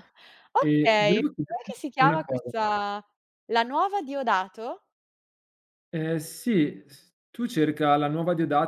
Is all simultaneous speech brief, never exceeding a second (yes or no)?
no